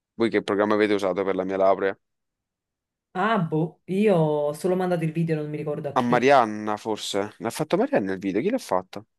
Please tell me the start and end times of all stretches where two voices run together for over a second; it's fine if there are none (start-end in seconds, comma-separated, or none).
none